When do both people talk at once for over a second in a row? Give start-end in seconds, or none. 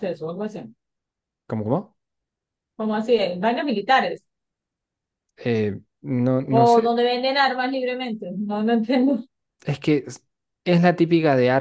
none